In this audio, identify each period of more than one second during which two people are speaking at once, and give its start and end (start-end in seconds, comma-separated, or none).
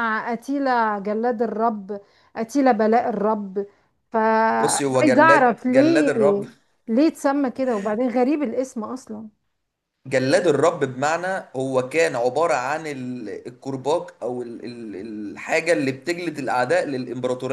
4.6-6.1